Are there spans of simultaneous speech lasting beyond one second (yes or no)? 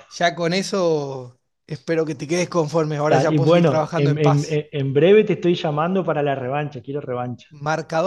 yes